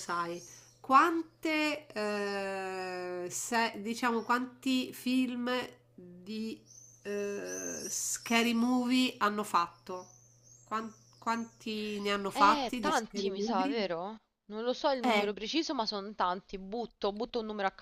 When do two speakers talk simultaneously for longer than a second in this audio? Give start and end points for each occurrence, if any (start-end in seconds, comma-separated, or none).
12.3-13.8